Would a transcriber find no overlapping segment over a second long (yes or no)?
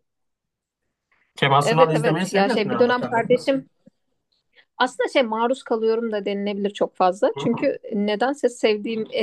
no